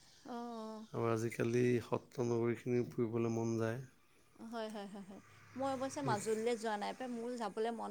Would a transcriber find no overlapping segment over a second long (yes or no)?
yes